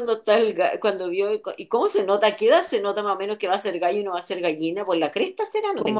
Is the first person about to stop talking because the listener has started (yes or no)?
yes